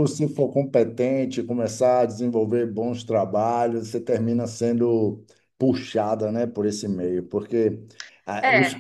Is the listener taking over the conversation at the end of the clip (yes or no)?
no